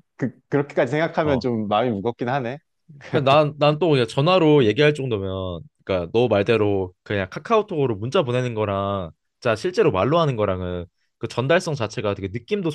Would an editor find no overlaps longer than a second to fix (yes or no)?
yes